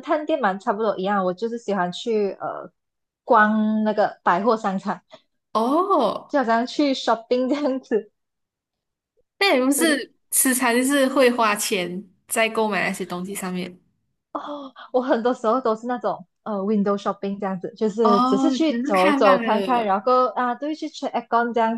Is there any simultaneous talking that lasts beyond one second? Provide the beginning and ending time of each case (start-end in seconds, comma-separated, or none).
18.0-19.9